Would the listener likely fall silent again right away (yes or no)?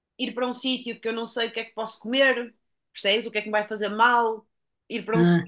yes